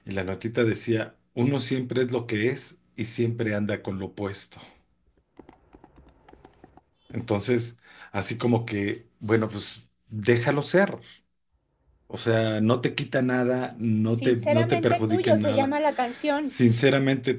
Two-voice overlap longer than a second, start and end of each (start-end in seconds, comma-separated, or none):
14.0-15.8